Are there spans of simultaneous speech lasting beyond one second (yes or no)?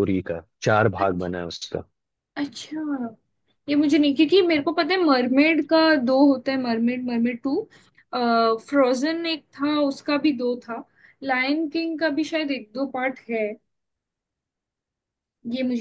no